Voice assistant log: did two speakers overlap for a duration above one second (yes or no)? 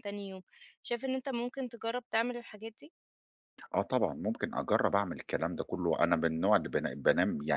no